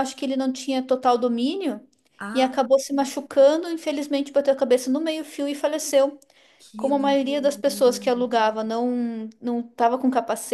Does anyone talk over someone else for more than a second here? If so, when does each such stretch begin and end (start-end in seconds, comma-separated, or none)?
6.8-8.0